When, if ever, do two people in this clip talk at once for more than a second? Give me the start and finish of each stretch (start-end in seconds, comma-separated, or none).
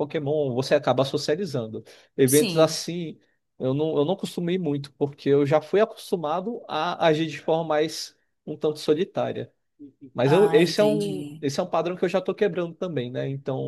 10.2-11.4